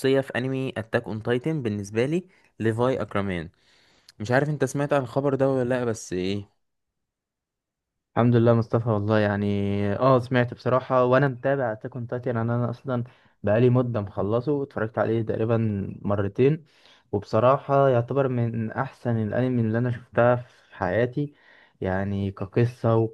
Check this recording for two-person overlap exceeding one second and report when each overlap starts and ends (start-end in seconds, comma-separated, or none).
none